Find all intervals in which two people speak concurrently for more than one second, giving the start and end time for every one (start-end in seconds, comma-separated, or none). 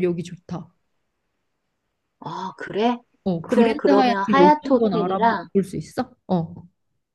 3.4-5.5